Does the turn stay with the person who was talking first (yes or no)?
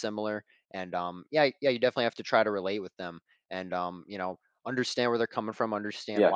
yes